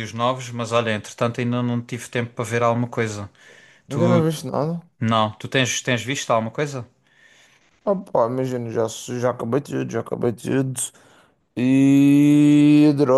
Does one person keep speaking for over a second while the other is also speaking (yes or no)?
no